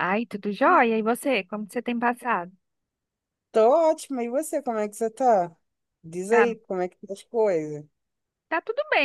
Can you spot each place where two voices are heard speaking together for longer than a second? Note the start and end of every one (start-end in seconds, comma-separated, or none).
none